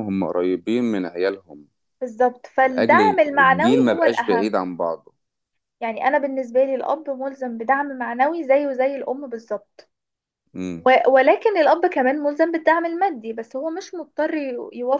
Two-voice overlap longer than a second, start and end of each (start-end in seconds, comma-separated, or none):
2.6-4.7